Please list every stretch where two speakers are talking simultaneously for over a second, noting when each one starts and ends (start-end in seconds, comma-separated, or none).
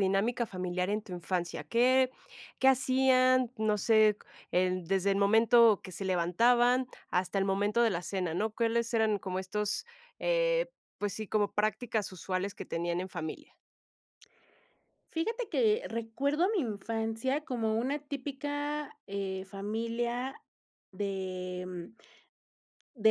none